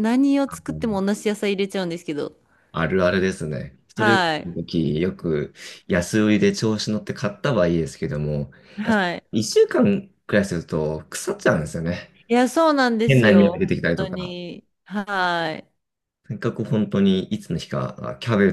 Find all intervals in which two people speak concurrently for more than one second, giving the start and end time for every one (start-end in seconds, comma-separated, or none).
13.1-14.3